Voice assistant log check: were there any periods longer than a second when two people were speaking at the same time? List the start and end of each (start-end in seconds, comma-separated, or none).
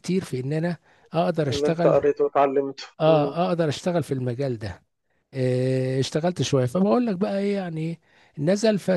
none